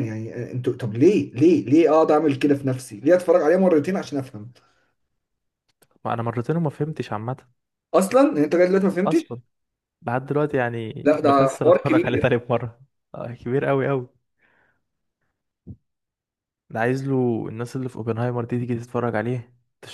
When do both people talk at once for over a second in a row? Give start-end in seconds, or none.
11.1-12.4